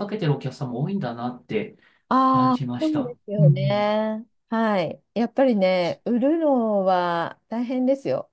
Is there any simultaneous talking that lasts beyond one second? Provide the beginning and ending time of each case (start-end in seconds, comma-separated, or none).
2.3-3.9